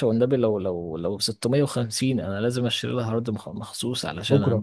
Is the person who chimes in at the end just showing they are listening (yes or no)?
yes